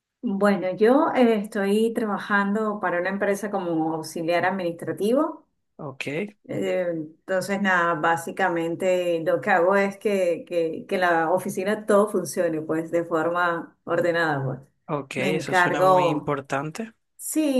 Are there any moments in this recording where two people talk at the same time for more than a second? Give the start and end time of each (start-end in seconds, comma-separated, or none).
15.2-16.4